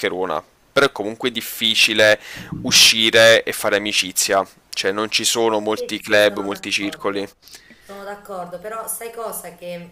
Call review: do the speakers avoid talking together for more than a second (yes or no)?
no